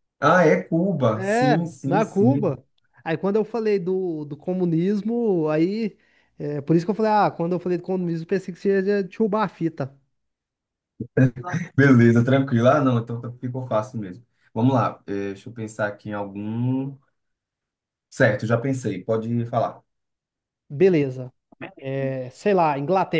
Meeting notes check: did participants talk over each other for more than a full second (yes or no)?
yes